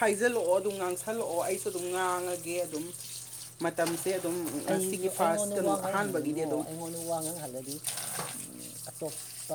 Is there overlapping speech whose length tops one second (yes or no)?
yes